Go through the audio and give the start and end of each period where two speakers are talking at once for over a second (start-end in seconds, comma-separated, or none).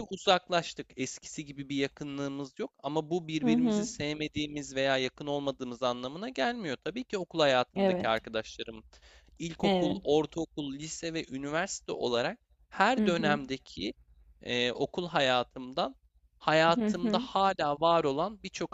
none